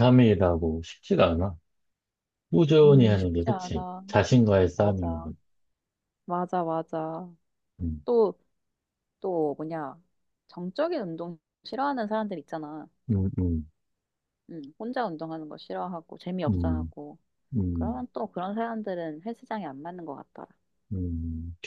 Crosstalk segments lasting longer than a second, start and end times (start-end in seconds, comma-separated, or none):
2.8-4.0